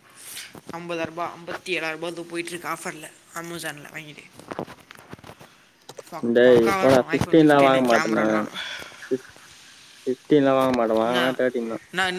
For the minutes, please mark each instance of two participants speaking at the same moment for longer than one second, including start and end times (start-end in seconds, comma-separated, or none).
7.2-8.5